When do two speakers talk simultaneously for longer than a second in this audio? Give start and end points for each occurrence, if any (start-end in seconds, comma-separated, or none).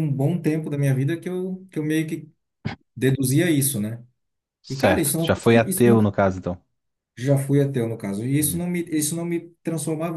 4.7-6.0